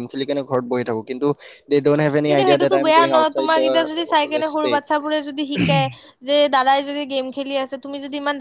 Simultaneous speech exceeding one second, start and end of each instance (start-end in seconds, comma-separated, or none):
2.2-4.8